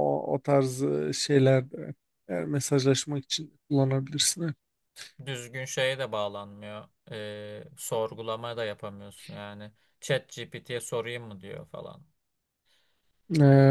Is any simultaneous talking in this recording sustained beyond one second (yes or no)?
no